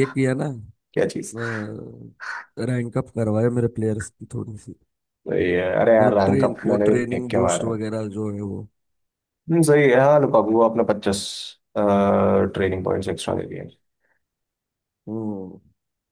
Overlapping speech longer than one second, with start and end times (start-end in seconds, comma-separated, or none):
6.0-7.8